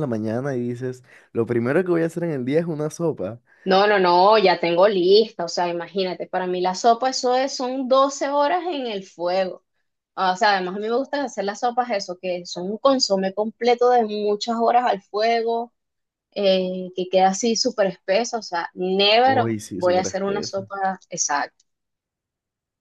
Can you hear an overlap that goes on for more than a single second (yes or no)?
yes